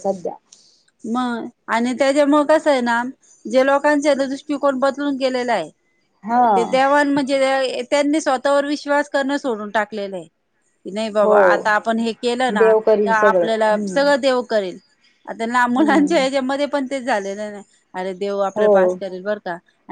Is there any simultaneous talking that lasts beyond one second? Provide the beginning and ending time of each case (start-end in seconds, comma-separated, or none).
12.5-14.1